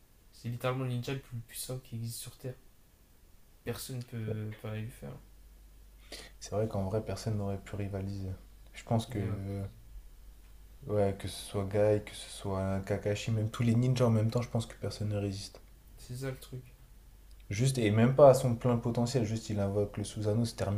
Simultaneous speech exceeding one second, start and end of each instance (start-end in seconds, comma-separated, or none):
none